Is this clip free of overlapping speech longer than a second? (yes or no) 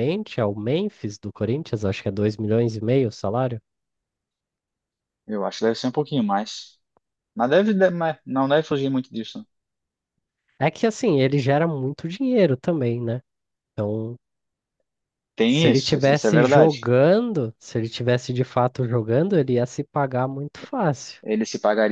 no